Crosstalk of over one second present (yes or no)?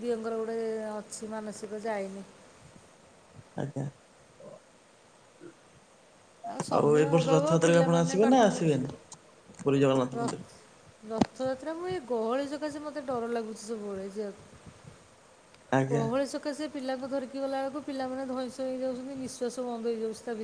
yes